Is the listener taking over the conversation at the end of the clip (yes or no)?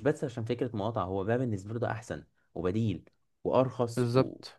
no